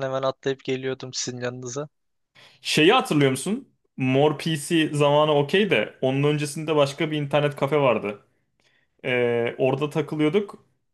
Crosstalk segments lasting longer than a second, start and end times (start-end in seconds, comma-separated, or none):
none